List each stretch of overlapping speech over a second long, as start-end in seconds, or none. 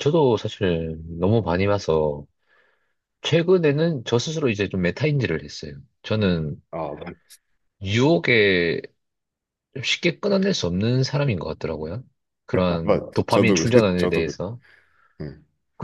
12.8-14.4